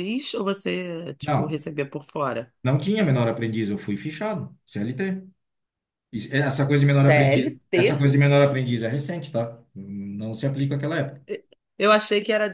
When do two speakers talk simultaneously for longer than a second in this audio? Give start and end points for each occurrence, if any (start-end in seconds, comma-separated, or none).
6.7-8.0